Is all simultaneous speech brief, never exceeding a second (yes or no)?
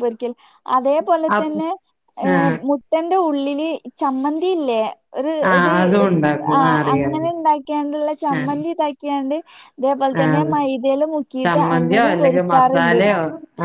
no